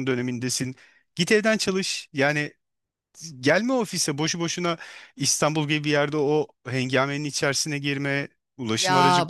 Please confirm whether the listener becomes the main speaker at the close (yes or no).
yes